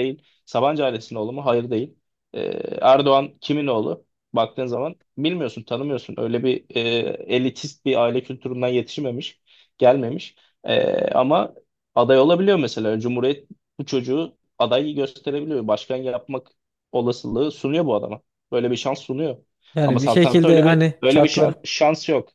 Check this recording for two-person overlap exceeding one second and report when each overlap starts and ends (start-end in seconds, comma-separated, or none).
19.8-21.7